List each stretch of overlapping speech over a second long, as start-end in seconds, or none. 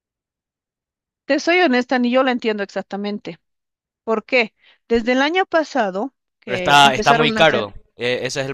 6.4-7.7